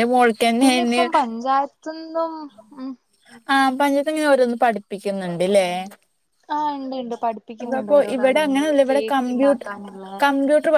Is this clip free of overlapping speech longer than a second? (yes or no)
no